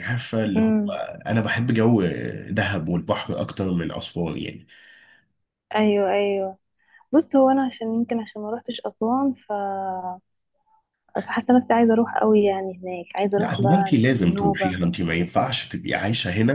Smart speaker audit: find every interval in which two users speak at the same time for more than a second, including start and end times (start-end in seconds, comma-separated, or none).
13.4-14.8